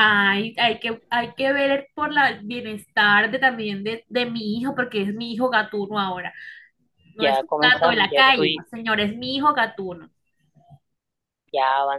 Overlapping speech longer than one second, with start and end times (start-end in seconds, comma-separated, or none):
7.2-8.7